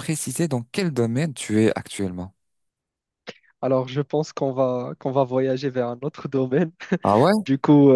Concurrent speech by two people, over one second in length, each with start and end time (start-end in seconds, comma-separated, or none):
none